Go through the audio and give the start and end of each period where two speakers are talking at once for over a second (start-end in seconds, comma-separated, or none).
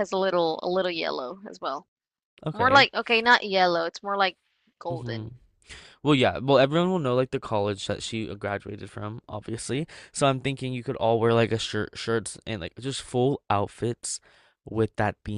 none